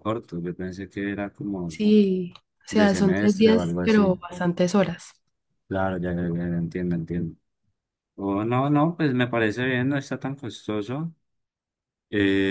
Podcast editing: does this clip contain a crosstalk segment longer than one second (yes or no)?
yes